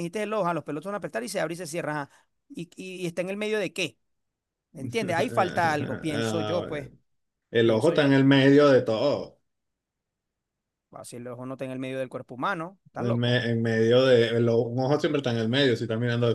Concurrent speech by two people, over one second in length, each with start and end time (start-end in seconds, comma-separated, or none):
5.4-6.7